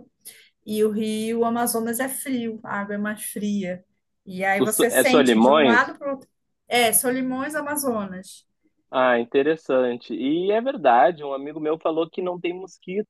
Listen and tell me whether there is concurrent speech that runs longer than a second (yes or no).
yes